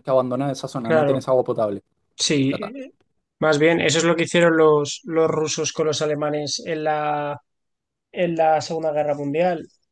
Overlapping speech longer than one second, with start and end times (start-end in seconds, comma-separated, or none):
none